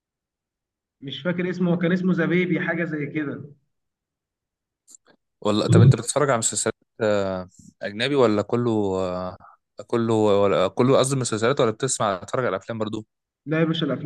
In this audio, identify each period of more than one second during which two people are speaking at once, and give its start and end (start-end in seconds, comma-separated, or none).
none